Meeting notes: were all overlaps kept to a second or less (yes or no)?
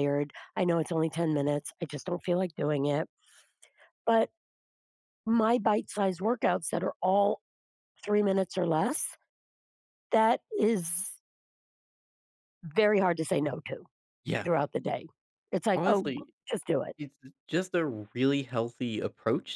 yes